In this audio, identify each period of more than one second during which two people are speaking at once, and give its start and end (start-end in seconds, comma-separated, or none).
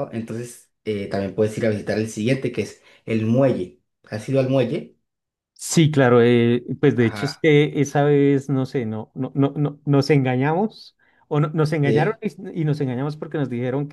none